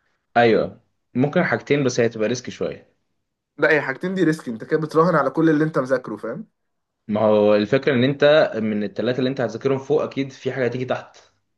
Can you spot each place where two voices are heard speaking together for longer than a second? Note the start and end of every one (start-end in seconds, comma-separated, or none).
none